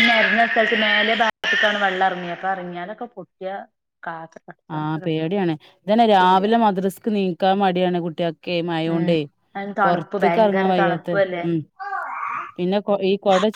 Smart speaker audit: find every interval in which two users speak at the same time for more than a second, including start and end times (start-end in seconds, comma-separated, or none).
9.8-11.1